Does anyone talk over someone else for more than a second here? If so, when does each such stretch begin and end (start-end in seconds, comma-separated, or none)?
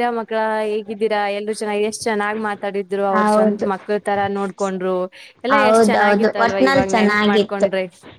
5.6-7.7